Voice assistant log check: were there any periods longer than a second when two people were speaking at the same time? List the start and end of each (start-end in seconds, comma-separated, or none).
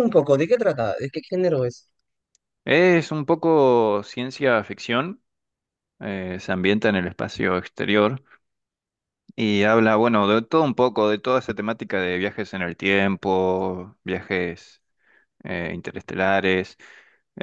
none